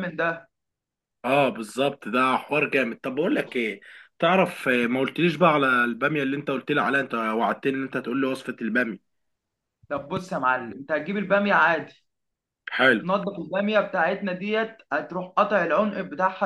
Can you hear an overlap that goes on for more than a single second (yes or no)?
no